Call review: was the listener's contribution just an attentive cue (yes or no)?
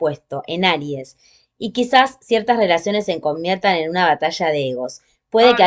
yes